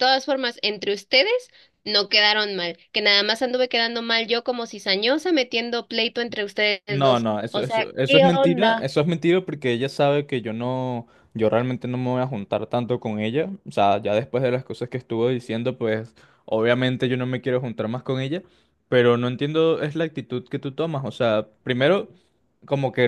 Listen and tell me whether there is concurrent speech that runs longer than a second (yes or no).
yes